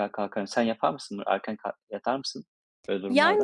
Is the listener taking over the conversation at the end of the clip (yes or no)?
yes